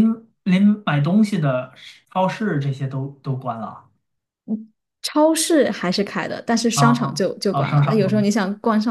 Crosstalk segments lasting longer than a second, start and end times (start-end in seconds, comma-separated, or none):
6.7-8.3